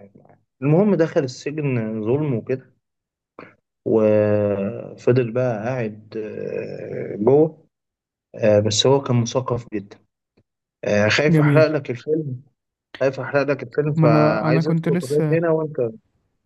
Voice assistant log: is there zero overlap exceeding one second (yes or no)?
no